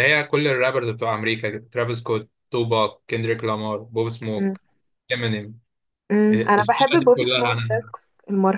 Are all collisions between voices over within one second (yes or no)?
no